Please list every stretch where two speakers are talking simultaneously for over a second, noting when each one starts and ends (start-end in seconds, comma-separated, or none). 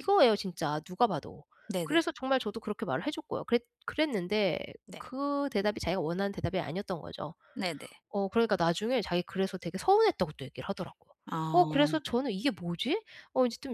none